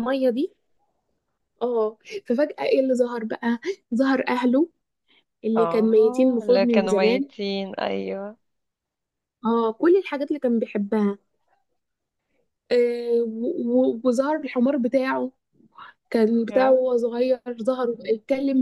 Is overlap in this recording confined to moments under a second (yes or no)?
no